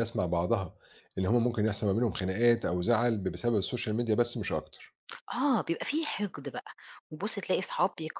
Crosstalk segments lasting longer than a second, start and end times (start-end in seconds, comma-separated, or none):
none